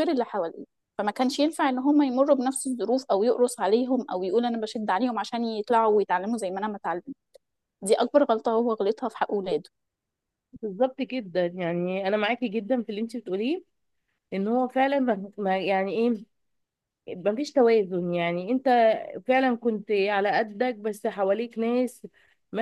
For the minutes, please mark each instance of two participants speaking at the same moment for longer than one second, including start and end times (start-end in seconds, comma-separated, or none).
none